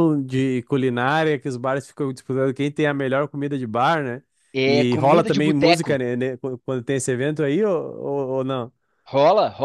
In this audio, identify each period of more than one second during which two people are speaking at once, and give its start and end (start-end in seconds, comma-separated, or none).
4.7-6.0